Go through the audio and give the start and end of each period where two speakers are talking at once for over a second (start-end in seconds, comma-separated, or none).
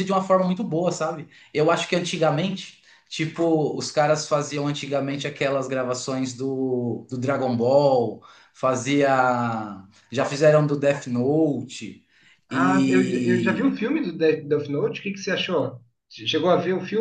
12.5-13.8